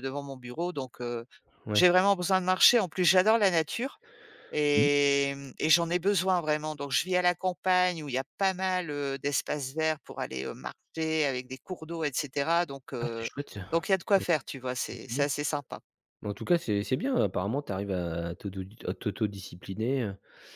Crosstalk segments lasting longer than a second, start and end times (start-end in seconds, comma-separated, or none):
none